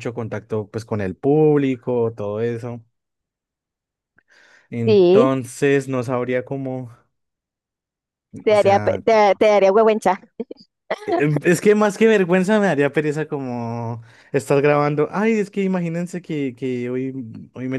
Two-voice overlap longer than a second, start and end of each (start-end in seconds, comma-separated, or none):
none